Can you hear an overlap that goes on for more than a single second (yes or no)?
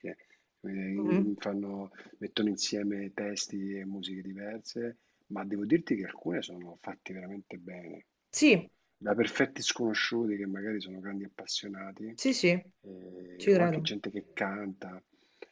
no